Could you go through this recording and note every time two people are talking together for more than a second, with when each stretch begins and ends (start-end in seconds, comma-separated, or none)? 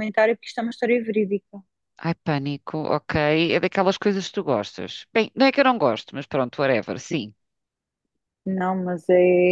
none